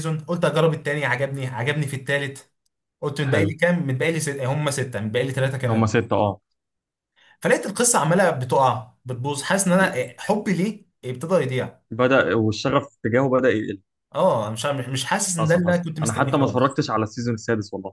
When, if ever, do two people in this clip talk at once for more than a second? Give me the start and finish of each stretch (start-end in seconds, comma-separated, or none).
15.4-16.8